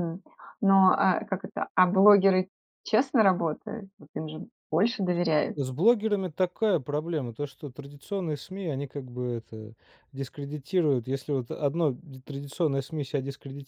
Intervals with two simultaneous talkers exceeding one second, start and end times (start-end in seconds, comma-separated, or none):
none